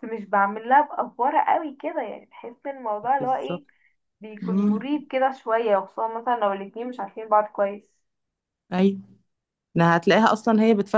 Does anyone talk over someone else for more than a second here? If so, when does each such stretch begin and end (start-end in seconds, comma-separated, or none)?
none